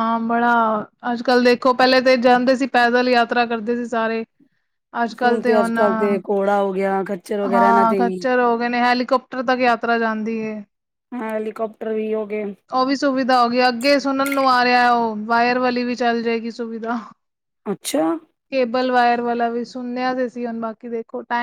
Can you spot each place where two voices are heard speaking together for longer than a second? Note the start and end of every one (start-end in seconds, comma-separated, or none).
none